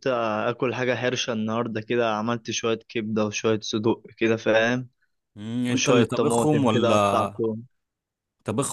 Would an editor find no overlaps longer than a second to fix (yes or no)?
no